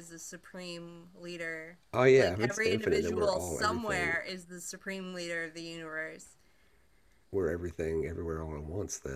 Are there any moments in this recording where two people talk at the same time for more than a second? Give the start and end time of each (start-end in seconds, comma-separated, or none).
2.2-4.2